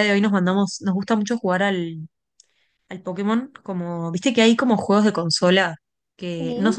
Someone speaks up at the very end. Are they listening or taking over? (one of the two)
listening